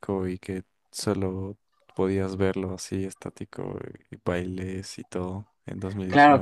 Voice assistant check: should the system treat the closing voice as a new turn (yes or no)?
yes